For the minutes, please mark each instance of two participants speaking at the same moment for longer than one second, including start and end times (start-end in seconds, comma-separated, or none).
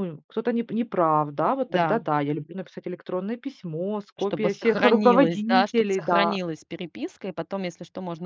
4.2-6.4